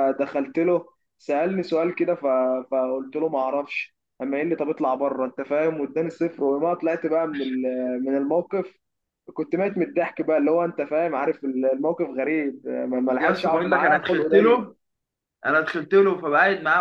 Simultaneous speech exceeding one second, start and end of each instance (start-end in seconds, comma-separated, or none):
13.2-14.7